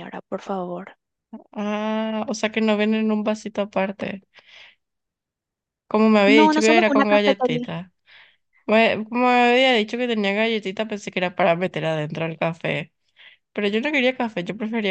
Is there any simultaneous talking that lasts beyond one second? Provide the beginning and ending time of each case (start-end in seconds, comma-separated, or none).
6.2-7.7